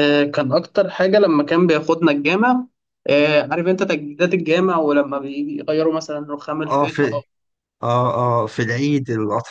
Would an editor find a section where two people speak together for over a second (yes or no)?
no